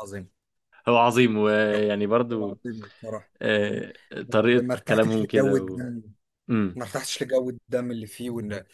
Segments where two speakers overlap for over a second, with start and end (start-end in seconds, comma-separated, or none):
4.6-5.8